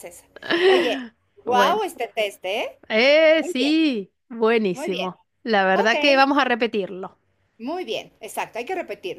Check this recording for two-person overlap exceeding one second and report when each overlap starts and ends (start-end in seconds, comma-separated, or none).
none